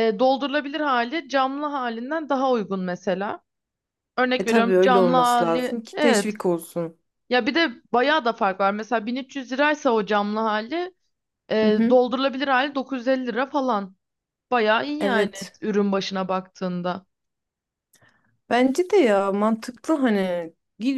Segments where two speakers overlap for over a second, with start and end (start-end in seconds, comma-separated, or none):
4.4-6.4